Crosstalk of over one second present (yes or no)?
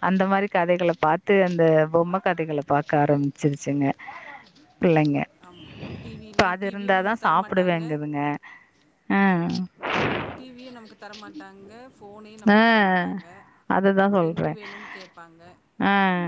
yes